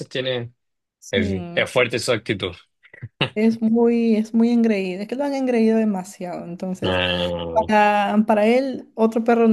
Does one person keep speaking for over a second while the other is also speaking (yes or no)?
no